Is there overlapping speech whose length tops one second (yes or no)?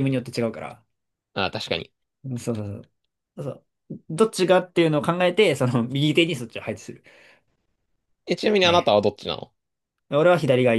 no